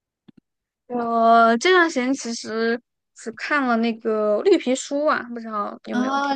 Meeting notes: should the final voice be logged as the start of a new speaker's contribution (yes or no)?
yes